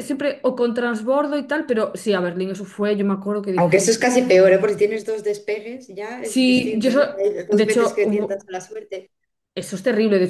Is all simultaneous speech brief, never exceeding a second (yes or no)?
no